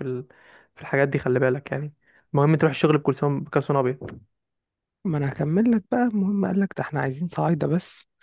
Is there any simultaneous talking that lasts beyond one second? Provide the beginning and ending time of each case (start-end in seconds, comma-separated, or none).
none